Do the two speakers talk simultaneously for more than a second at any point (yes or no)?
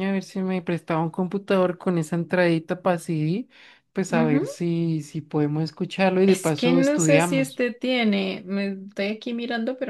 yes